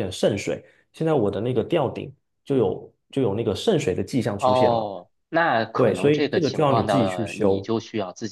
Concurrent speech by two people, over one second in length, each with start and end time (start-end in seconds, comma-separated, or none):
5.8-7.7